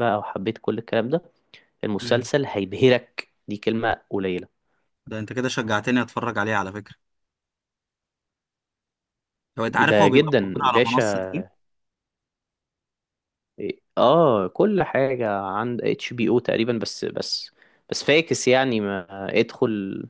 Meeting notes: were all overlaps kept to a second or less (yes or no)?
no